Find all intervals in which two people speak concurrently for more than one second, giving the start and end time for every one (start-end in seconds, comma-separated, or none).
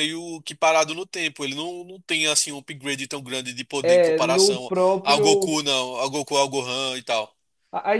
3.8-5.6